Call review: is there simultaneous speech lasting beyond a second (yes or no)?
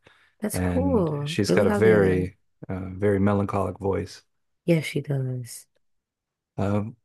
yes